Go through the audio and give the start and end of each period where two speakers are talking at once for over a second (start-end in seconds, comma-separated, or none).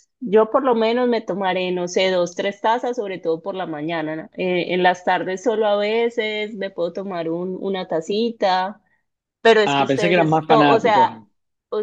9.7-11.2